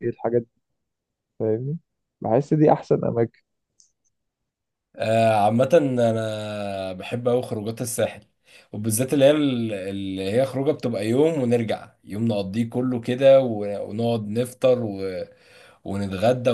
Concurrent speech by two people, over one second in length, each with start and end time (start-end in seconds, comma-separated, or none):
none